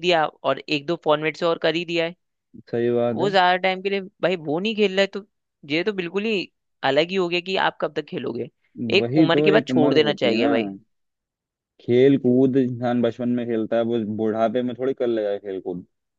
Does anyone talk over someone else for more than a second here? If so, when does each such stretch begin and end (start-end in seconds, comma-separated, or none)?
9.0-10.5